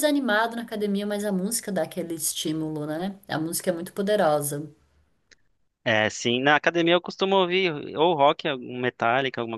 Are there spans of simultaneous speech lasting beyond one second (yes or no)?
no